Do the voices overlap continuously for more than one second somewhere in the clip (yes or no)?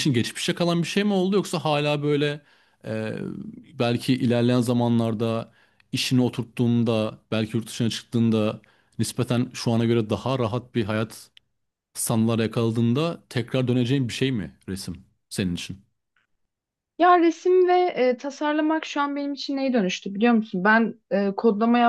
no